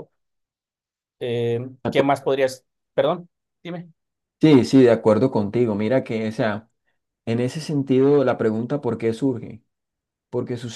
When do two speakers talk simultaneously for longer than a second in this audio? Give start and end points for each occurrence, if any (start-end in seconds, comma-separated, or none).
none